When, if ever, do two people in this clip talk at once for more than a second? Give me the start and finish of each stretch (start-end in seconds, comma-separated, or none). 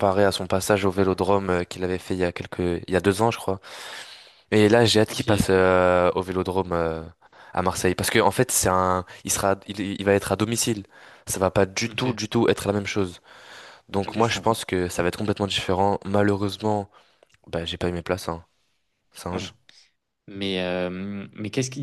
none